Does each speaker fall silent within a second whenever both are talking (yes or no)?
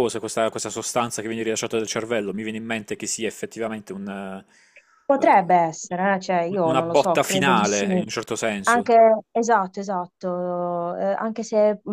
no